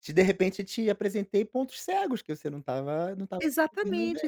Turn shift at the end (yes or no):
yes